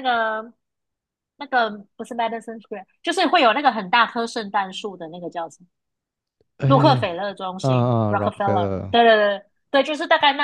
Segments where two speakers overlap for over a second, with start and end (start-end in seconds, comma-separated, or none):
7.6-9.0